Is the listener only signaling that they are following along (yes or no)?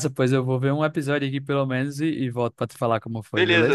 no